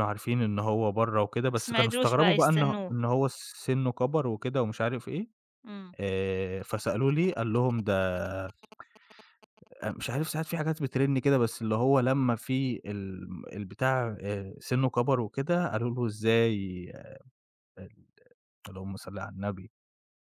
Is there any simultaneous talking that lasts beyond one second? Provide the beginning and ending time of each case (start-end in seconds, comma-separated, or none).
1.5-2.9